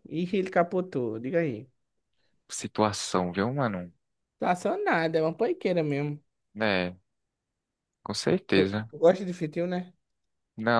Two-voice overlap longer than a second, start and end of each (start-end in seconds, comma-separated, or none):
none